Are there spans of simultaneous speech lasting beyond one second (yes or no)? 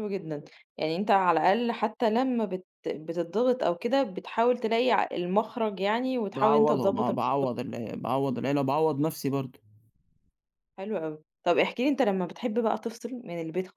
yes